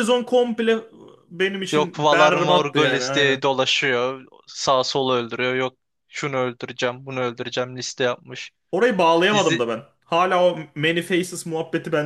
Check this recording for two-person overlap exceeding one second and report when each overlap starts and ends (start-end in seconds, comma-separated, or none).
1.7-3.5